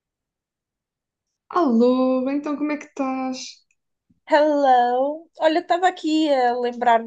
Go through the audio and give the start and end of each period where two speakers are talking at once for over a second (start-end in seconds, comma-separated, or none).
none